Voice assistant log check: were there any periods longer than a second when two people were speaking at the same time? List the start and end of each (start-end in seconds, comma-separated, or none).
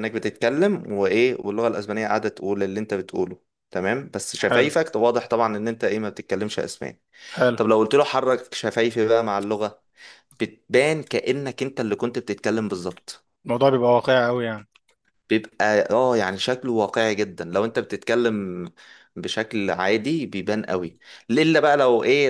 none